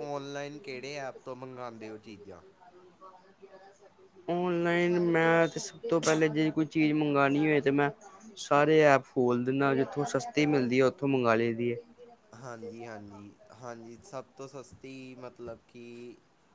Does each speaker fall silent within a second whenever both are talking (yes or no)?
yes